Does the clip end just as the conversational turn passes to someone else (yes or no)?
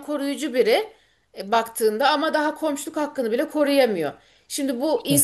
no